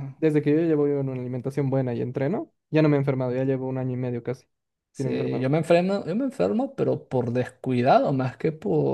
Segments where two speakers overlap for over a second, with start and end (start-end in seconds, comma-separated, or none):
none